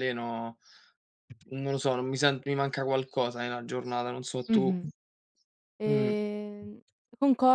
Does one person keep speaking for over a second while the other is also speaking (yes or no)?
no